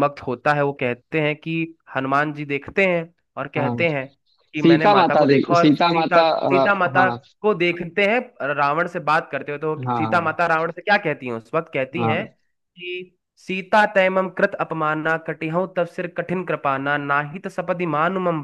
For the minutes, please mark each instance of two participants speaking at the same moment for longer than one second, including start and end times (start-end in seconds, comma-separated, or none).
4.6-7.2